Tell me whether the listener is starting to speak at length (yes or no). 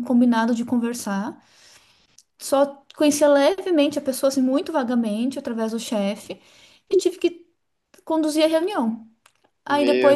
no